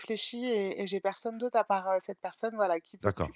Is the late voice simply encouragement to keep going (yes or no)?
no